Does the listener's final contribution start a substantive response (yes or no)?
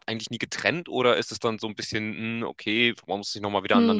no